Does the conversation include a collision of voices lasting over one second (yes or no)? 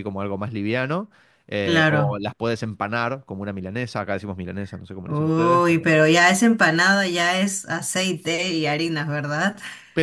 no